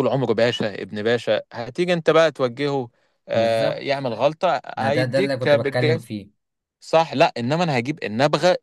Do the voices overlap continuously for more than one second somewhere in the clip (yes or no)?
yes